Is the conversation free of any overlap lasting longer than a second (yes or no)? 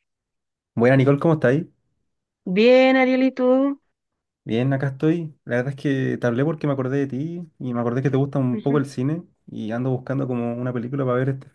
yes